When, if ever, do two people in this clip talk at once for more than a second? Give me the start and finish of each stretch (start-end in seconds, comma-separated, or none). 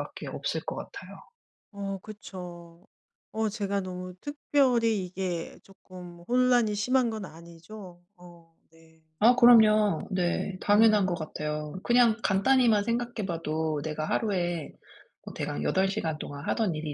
none